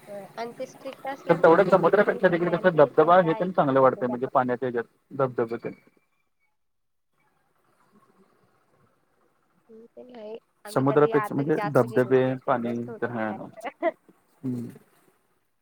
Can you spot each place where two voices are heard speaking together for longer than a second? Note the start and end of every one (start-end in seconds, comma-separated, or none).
10.7-13.3